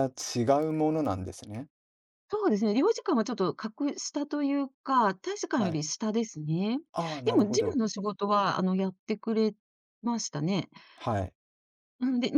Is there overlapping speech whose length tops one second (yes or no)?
no